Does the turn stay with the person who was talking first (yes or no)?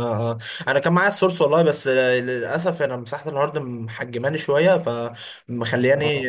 yes